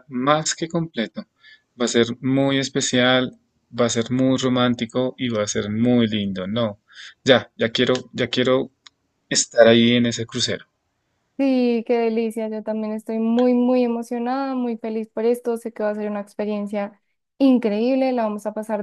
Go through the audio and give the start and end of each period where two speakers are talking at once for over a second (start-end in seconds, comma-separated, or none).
none